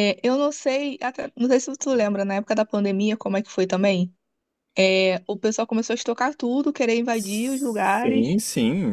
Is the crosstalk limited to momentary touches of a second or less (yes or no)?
no